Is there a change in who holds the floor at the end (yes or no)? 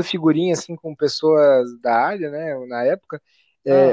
no